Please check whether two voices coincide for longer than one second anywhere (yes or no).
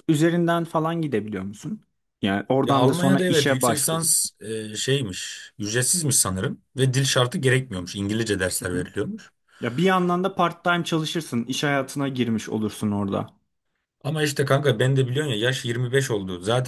yes